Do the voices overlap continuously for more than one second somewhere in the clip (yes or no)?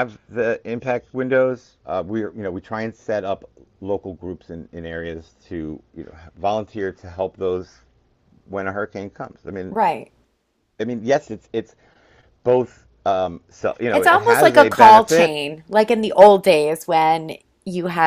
yes